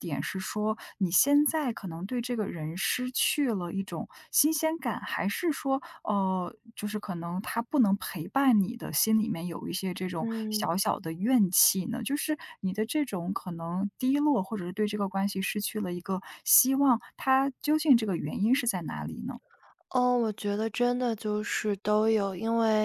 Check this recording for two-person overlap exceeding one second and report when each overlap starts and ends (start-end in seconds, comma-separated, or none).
none